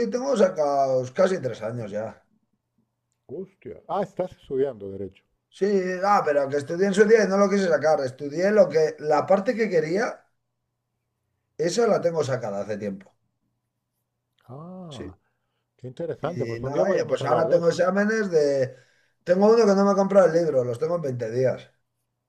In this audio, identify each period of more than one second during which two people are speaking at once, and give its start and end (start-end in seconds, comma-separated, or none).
16.2-17.8